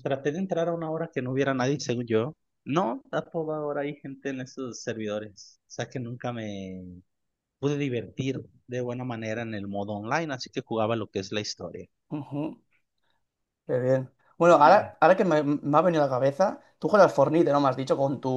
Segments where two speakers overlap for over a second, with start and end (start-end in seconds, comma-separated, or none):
none